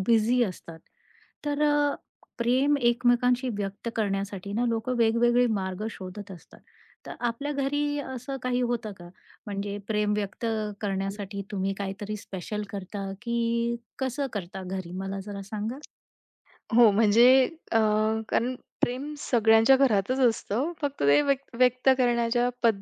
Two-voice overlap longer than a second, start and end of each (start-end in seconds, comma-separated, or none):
none